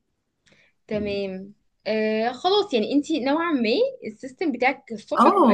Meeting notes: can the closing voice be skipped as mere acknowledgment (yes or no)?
no